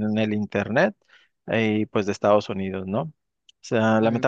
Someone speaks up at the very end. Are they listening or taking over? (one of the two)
listening